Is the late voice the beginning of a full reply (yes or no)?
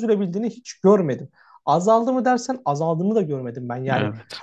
no